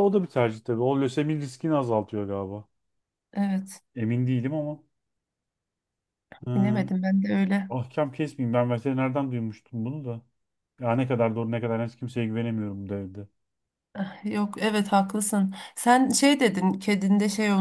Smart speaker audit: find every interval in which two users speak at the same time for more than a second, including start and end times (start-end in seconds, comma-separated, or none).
none